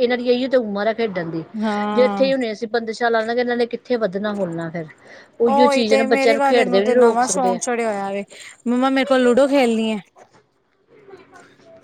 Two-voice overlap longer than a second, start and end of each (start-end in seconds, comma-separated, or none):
5.5-7.6